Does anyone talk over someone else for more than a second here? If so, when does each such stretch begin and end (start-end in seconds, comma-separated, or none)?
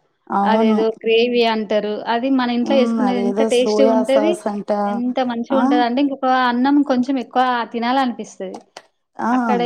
2.6-4.3